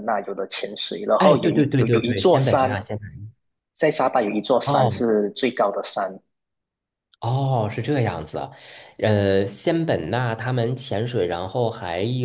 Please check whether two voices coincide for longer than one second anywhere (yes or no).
yes